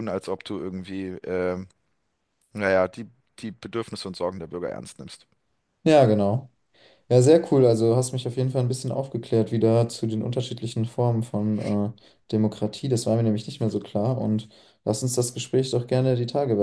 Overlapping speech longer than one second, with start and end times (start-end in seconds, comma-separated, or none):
none